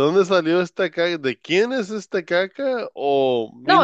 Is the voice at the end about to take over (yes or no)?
yes